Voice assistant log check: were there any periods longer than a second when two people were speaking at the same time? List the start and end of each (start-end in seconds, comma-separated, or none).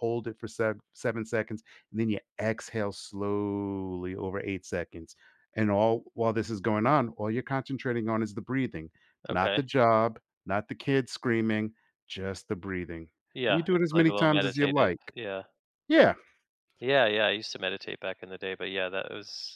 13.5-15.1